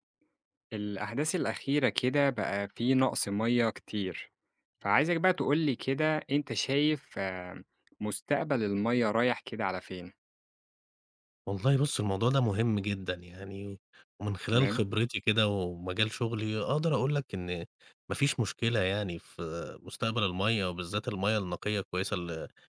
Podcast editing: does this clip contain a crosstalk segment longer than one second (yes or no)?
no